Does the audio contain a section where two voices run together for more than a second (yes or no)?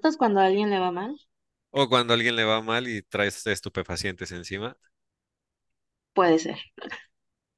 no